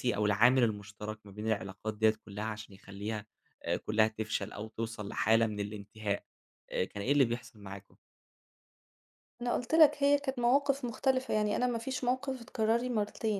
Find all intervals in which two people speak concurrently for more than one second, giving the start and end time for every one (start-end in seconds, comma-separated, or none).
none